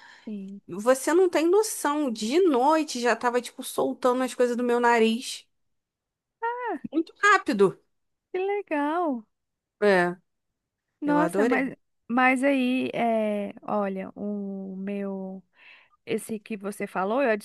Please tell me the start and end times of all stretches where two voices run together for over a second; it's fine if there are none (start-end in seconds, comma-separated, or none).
none